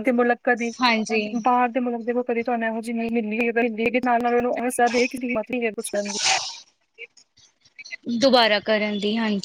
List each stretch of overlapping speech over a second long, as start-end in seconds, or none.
none